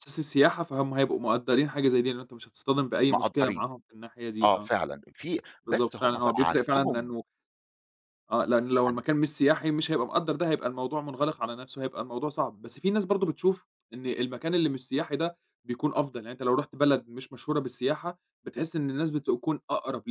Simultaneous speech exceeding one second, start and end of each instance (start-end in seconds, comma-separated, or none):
5.7-7.1